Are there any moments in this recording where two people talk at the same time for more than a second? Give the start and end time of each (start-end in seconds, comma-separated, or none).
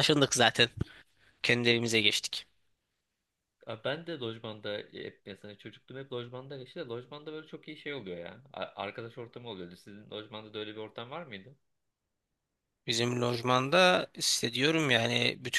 none